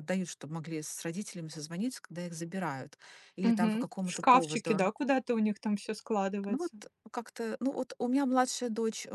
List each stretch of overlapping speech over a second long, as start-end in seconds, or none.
3.4-4.8